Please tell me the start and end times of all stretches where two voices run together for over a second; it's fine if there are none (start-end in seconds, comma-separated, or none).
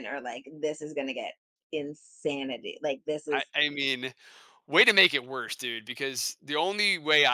none